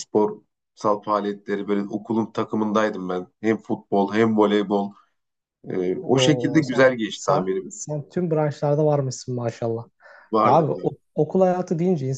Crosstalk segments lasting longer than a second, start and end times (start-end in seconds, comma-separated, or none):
6.1-7.7